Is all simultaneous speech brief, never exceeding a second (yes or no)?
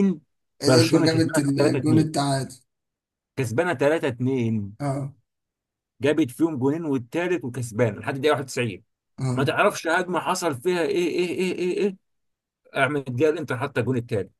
no